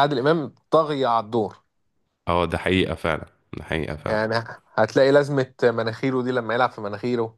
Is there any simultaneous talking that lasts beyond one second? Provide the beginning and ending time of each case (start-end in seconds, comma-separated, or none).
none